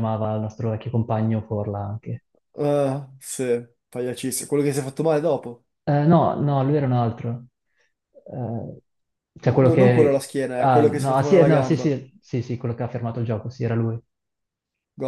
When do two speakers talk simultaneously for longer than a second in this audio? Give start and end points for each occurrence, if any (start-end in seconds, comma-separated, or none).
9.4-11.9